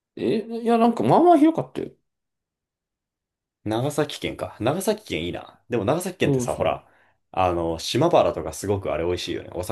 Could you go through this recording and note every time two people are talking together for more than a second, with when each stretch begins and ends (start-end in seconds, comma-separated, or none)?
none